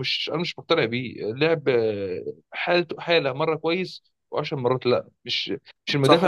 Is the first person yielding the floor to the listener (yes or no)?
no